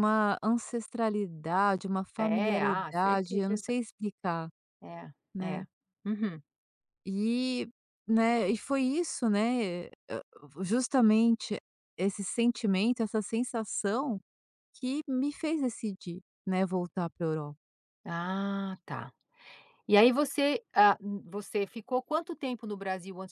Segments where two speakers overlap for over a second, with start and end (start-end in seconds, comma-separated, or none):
2.2-3.7